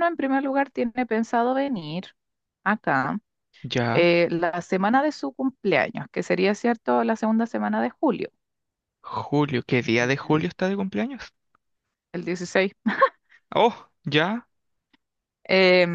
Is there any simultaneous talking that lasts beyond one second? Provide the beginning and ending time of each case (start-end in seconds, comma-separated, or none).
none